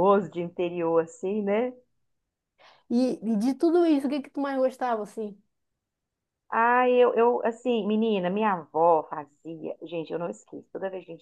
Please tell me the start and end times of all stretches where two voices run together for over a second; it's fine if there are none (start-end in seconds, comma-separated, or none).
none